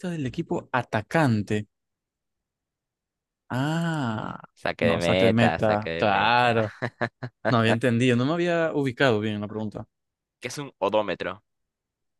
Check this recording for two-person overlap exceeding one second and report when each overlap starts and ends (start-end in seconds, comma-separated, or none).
4.8-6.7